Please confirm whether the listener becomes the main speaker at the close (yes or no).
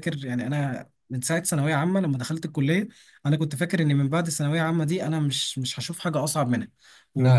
no